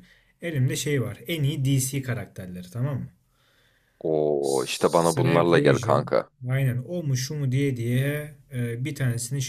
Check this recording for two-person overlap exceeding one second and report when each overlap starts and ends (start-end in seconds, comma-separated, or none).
4.4-6.1